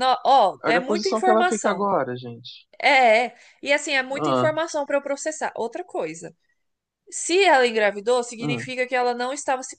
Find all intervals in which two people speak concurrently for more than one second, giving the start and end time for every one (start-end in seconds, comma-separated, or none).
0.6-1.9